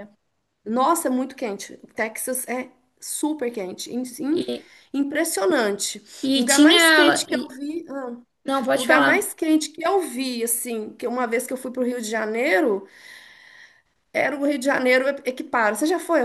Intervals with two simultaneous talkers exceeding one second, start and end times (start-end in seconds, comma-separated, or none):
6.3-7.6